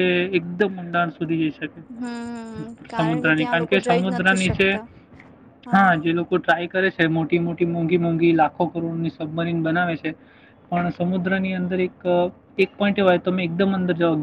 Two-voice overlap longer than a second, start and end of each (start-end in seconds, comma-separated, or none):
3.0-4.7